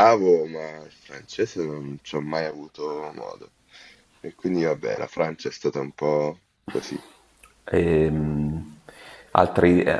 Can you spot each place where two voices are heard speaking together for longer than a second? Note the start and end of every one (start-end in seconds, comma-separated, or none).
none